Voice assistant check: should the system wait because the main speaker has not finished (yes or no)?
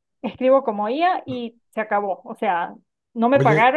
yes